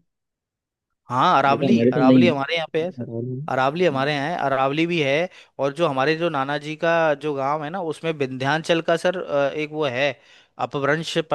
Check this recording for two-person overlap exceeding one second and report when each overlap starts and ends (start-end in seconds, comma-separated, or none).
1.5-3.1